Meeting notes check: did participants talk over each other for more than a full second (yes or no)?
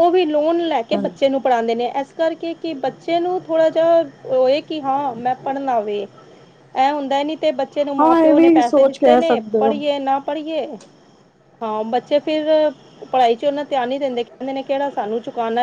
yes